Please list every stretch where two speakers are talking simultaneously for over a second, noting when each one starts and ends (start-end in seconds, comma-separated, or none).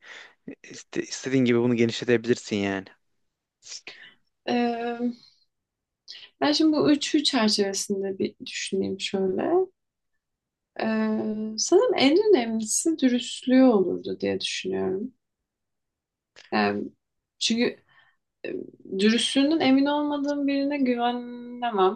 none